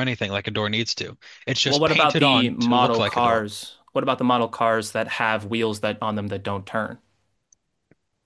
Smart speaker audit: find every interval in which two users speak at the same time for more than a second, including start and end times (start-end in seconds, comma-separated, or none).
1.6-3.4